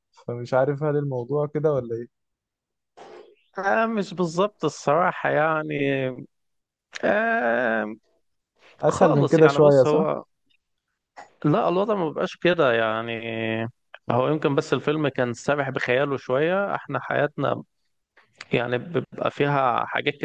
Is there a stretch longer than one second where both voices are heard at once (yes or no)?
yes